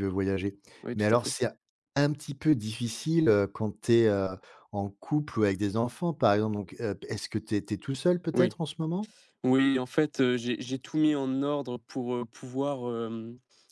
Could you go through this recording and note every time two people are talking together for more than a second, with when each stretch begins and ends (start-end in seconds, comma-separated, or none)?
none